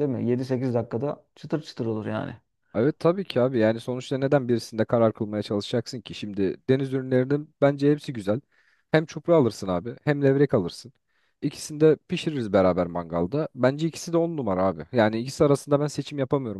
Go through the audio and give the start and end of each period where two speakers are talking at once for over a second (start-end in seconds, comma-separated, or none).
none